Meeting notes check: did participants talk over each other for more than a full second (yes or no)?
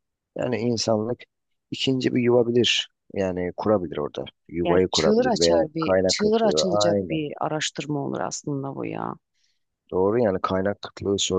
yes